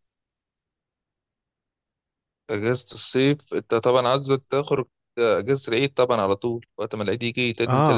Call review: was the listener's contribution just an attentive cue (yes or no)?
no